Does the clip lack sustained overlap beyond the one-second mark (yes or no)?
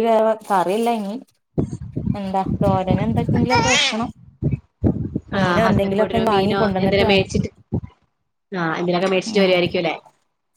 no